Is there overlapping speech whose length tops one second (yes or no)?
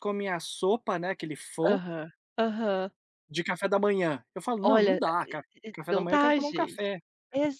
yes